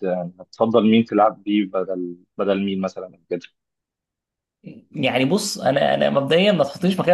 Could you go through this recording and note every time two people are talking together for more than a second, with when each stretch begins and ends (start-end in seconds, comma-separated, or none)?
none